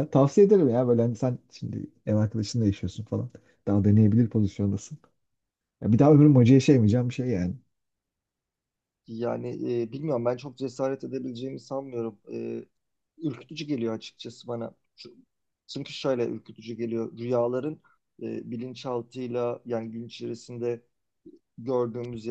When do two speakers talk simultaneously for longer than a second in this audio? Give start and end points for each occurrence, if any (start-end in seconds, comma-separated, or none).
none